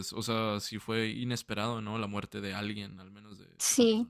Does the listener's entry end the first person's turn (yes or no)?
yes